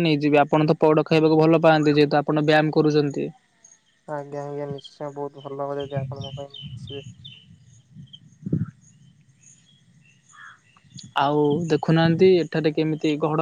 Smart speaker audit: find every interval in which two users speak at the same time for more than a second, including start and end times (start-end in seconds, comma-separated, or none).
none